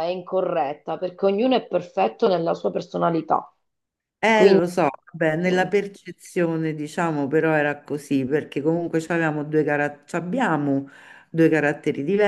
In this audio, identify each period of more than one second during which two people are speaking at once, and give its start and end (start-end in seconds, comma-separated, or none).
none